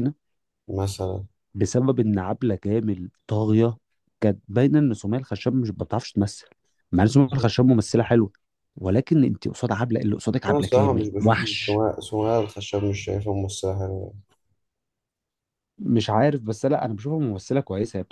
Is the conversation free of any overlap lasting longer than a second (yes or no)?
no